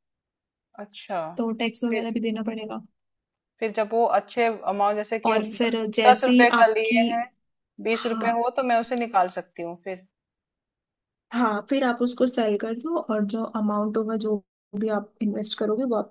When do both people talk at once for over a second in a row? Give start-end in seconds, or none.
5.2-7.0